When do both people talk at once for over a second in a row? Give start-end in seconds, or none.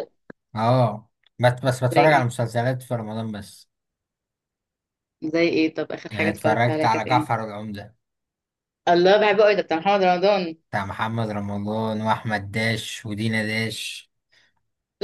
6.1-7.4